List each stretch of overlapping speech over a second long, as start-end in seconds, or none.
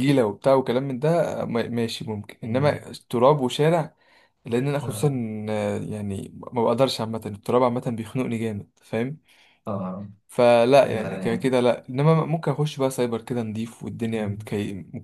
none